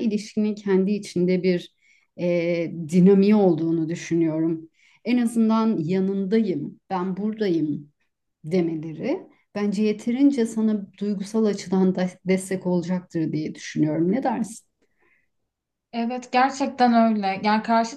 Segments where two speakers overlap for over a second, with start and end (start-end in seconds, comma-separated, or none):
none